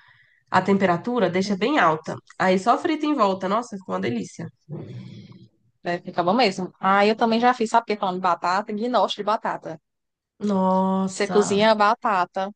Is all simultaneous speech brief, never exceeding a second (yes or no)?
yes